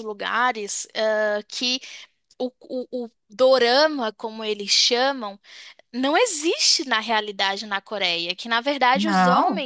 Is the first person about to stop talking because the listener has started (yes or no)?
no